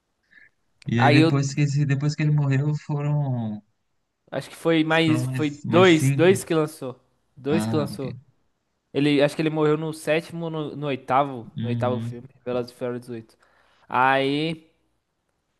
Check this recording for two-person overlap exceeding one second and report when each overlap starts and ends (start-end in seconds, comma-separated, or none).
5.1-6.4